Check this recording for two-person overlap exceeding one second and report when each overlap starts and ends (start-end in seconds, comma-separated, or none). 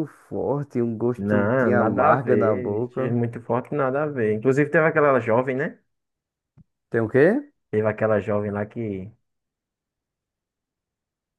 1.2-3.1